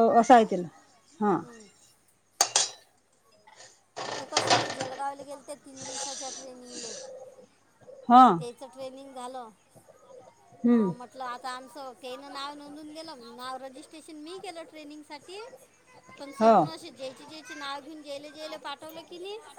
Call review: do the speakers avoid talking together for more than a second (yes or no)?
yes